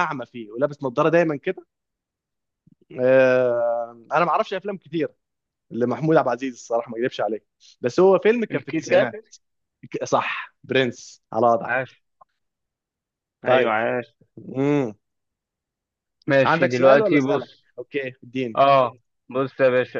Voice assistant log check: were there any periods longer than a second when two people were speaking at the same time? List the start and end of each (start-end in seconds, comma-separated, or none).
16.4-17.6